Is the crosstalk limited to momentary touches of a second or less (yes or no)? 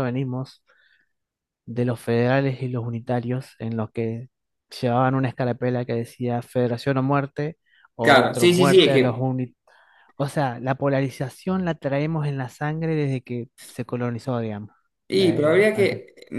no